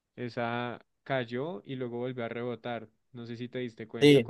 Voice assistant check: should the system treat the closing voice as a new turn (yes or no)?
yes